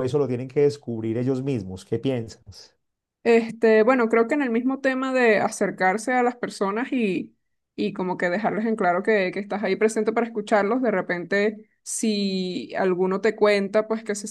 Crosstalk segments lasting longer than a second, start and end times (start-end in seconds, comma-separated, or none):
none